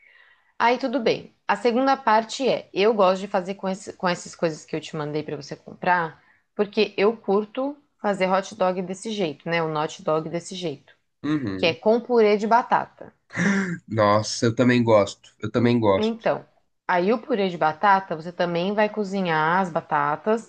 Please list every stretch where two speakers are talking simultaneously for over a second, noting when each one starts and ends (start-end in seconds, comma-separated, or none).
none